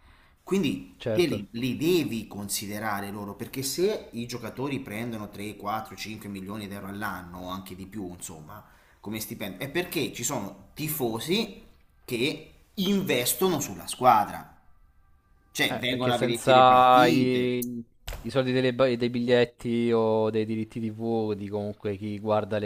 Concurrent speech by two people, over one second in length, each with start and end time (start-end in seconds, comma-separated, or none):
15.6-17.5